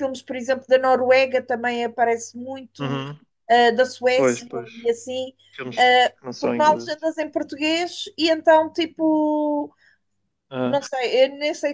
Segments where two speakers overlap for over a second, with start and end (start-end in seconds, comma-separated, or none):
5.8-7.1